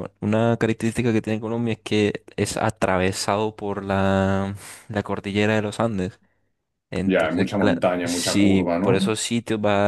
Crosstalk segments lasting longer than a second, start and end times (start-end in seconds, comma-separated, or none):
7.0-9.1